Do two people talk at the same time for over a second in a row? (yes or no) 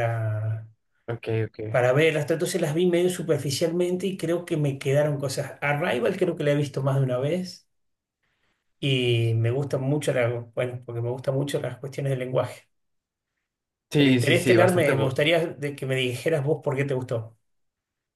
yes